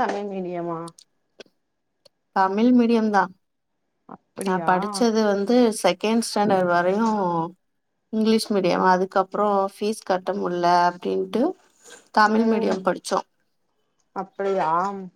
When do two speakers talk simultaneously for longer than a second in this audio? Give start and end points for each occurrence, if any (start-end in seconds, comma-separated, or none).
none